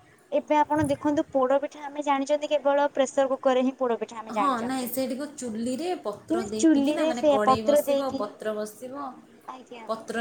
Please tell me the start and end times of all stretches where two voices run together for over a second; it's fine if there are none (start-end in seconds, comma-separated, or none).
6.3-8.3